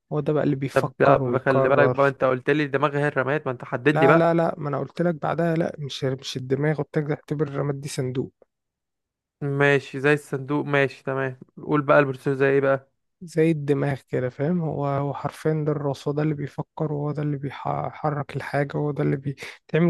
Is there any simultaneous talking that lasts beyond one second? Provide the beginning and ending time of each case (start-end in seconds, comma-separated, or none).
0.7-2.0